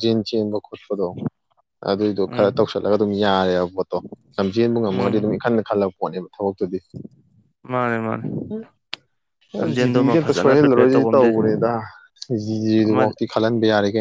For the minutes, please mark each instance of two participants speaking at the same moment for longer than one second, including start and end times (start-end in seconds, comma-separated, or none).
9.8-11.4